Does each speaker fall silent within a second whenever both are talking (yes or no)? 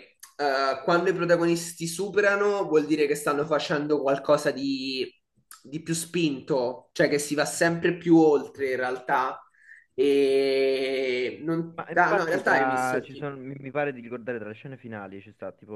no